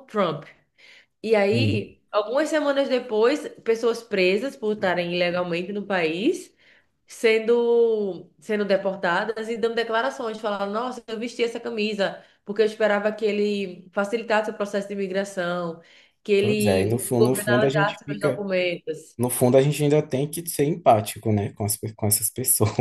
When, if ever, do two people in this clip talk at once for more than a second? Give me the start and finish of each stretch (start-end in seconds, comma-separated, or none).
16.4-18.4